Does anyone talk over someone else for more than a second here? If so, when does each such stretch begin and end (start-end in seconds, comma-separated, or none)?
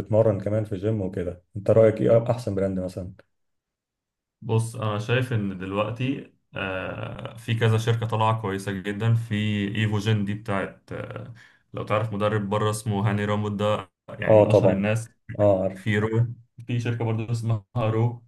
none